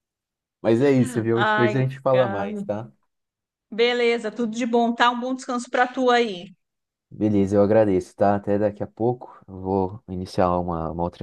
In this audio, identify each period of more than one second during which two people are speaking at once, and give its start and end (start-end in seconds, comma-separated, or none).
1.3-2.6